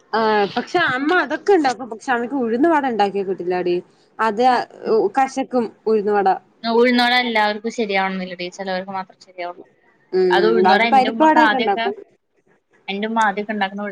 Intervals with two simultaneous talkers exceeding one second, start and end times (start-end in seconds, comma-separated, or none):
10.3-11.8